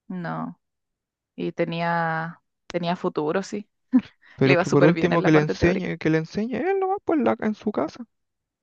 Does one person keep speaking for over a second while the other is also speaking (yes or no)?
yes